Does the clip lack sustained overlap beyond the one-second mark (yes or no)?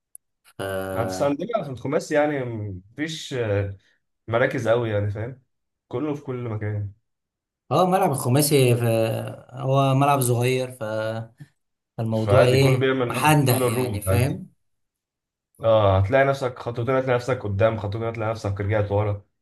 no